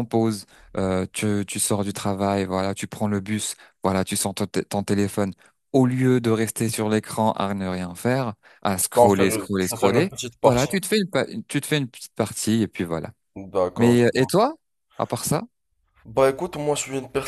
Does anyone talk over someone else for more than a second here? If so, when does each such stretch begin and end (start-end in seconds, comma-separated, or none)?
8.9-10.7